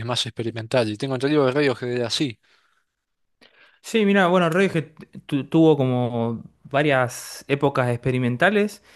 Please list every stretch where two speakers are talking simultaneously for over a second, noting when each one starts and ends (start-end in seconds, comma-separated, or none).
none